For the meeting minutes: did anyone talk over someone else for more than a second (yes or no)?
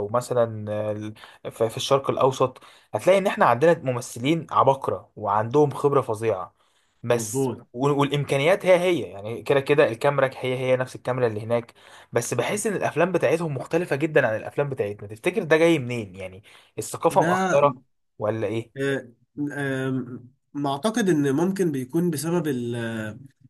no